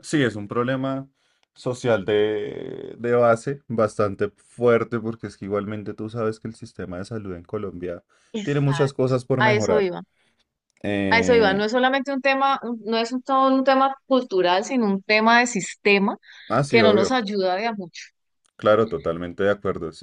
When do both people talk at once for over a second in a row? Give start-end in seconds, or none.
8.4-9.9